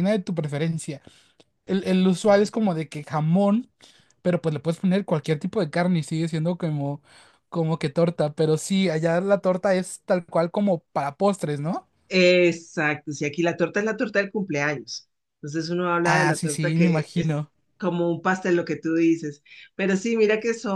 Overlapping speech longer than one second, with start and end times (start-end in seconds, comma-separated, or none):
16.0-17.5